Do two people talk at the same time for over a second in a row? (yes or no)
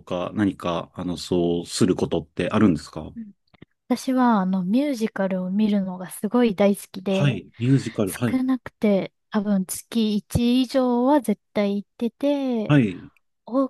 no